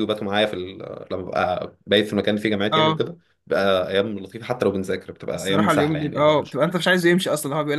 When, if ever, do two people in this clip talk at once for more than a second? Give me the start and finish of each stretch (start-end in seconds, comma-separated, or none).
5.3-6.6